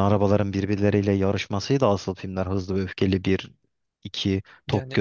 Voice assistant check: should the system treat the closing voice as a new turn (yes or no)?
yes